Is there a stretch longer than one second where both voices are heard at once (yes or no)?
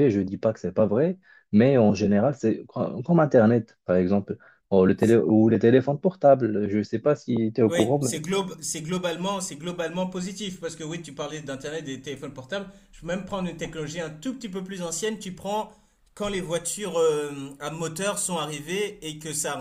no